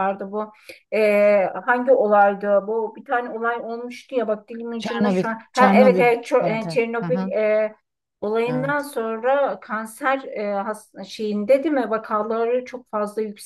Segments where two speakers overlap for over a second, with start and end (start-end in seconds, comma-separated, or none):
4.8-7.3